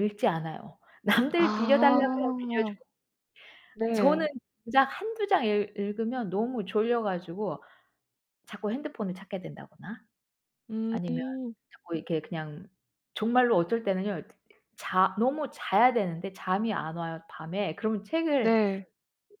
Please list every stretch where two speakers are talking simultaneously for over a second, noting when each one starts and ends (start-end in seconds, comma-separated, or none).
1.4-2.7